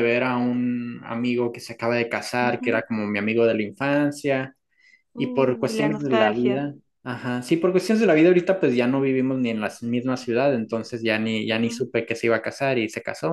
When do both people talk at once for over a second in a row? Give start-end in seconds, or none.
5.2-6.7